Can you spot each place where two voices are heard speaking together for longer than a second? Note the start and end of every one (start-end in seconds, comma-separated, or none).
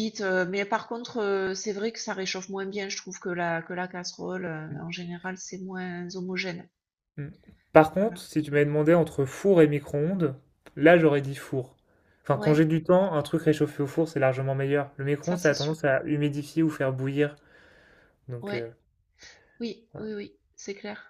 none